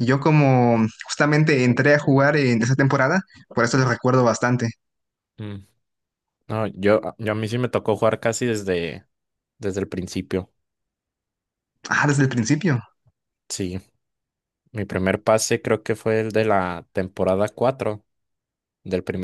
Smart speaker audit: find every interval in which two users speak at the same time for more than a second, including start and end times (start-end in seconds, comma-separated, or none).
none